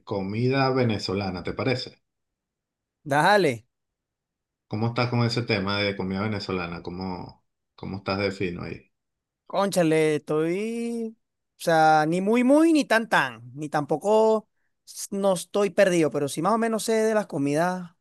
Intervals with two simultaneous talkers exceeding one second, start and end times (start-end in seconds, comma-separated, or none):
none